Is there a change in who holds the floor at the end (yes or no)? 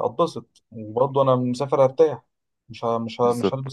no